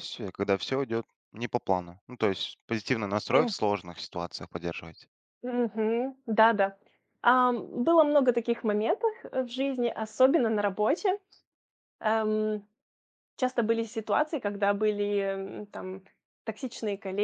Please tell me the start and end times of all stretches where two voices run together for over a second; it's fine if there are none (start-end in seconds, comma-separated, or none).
none